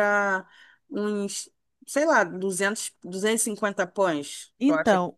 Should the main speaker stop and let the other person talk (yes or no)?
yes